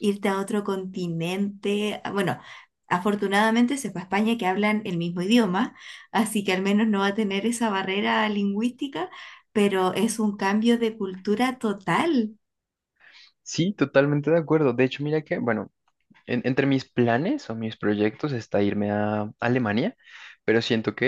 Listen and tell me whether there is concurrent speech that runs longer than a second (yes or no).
no